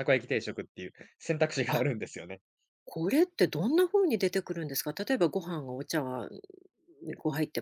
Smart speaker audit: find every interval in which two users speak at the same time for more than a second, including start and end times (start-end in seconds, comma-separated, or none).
none